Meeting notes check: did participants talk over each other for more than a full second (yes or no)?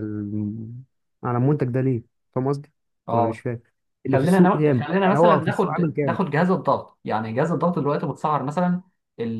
yes